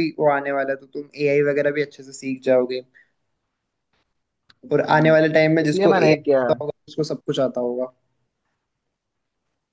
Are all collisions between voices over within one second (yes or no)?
no